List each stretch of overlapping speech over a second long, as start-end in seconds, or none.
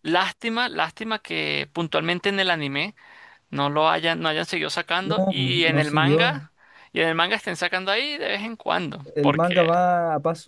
5.0-6.4